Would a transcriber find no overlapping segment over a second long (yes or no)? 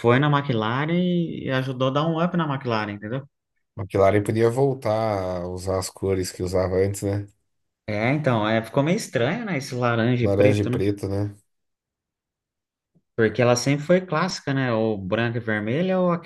yes